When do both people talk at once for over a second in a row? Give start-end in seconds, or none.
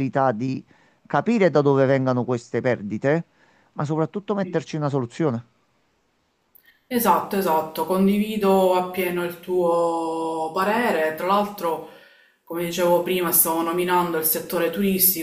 none